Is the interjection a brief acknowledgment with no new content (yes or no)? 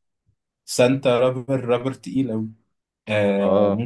yes